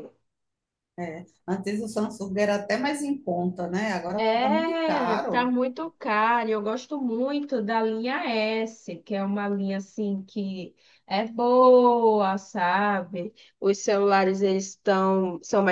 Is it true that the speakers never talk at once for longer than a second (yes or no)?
no